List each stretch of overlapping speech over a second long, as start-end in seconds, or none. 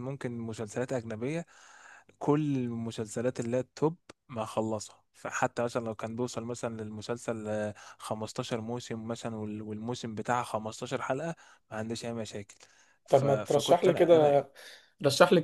13.1-14.3